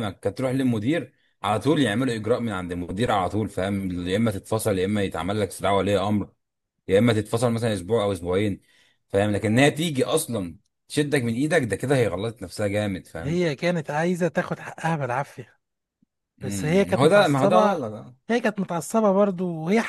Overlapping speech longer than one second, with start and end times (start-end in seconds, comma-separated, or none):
16.4-17.8